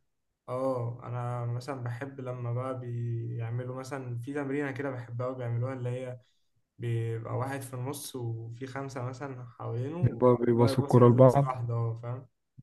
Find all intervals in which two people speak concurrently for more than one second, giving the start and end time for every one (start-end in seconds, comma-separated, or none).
10.0-11.6